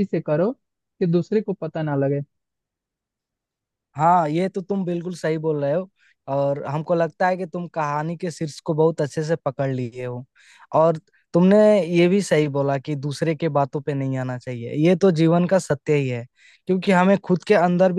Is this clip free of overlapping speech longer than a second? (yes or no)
yes